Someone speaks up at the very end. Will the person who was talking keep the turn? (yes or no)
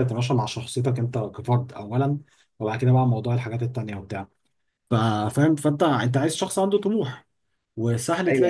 yes